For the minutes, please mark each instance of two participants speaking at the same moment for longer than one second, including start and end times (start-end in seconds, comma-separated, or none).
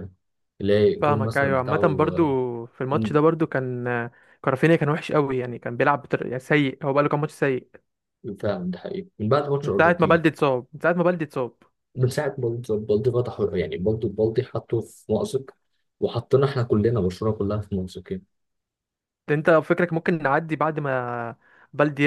1.0-2.2